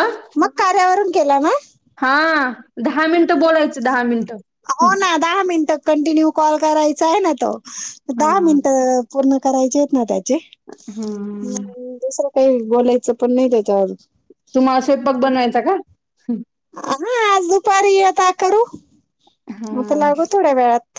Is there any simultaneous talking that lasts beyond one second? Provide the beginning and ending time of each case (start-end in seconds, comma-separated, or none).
none